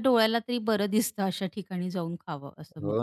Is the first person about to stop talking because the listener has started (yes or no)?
yes